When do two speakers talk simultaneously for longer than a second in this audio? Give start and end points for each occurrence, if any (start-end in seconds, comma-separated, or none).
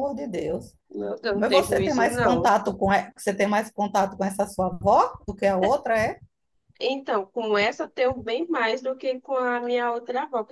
1.3-2.6